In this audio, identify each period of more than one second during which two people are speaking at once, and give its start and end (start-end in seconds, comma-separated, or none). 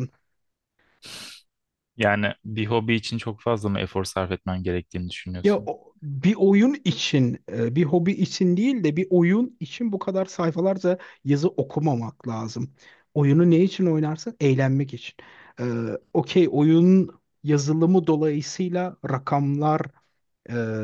none